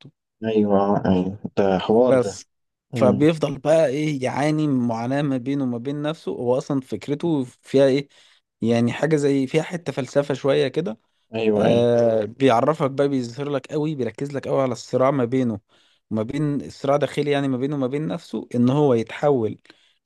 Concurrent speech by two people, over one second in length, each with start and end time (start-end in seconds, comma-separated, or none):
none